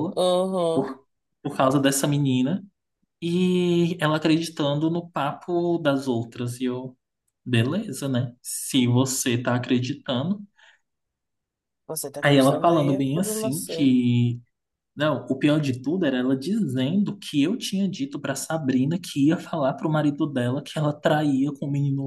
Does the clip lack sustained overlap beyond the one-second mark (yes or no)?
no